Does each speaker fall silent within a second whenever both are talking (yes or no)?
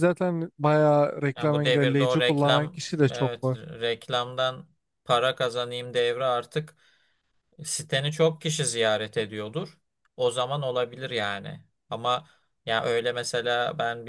no